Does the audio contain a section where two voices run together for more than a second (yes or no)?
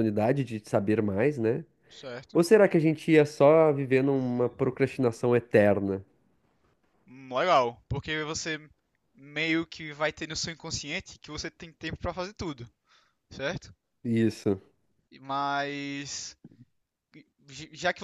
no